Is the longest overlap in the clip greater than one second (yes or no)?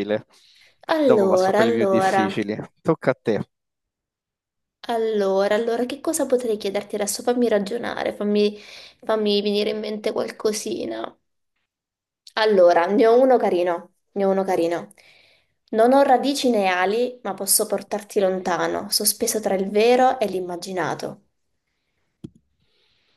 yes